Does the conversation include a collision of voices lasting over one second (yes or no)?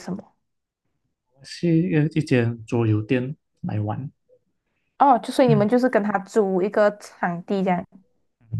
no